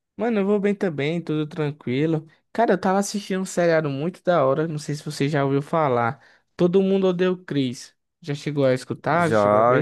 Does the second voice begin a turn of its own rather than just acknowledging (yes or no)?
yes